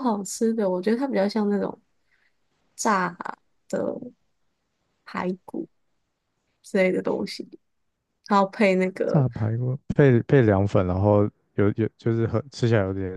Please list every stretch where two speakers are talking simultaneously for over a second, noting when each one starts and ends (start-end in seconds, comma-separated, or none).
none